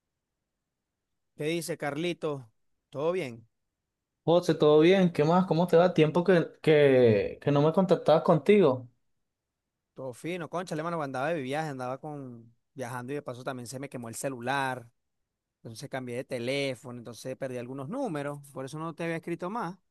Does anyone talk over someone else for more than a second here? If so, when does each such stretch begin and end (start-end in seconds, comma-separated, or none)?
none